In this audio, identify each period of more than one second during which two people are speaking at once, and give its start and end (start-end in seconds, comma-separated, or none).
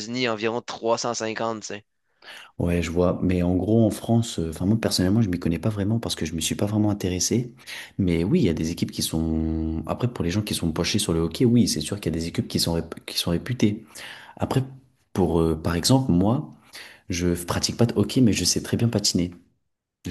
none